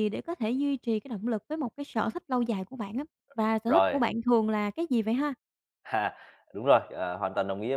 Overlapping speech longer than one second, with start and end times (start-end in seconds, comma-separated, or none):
none